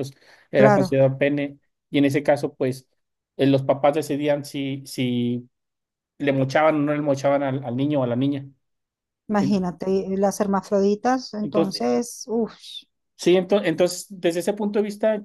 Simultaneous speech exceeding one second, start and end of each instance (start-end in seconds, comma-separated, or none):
none